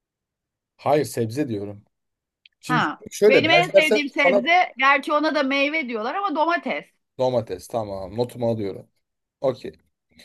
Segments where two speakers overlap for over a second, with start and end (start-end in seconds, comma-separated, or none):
2.7-4.4